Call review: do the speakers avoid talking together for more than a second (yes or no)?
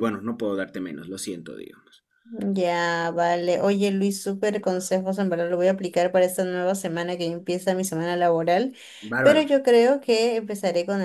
yes